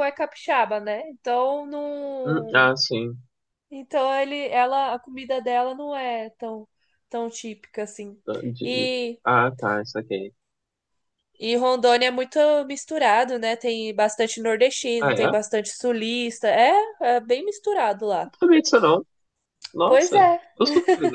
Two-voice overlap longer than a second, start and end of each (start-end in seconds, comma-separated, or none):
none